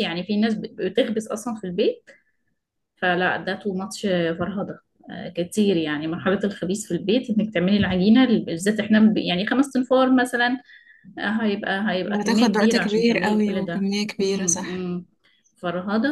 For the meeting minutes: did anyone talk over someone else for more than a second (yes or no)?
yes